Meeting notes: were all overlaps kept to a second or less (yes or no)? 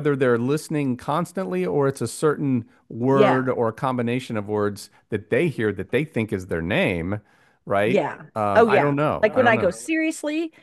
no